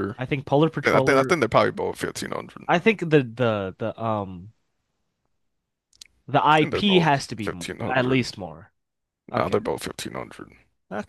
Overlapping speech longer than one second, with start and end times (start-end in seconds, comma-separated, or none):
6.6-8.2